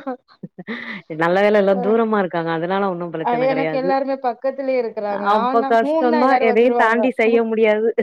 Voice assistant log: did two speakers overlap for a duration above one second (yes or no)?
yes